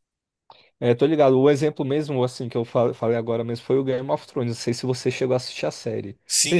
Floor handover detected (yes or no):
yes